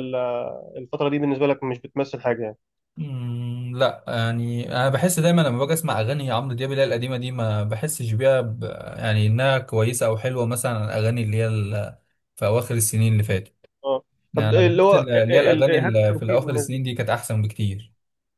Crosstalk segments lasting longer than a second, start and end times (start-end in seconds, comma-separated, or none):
14.3-16.8